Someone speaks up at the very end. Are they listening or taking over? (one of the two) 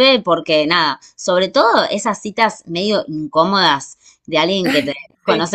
listening